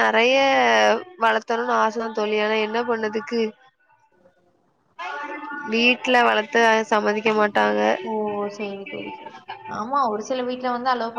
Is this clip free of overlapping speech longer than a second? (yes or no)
yes